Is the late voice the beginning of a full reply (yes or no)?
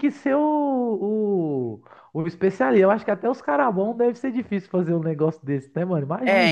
yes